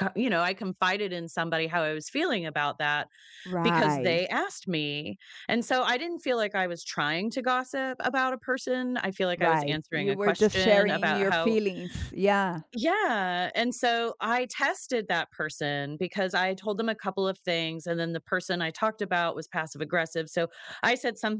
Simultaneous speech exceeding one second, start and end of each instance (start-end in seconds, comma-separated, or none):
9.4-11.6